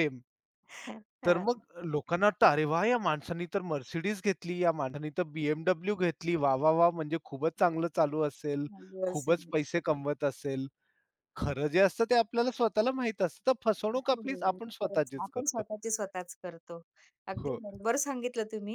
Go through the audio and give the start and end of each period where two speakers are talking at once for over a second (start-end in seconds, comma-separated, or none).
14.0-15.6